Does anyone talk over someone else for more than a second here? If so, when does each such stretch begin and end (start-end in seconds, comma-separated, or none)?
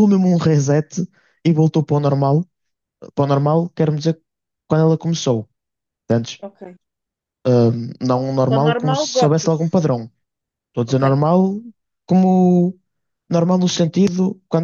8.5-9.8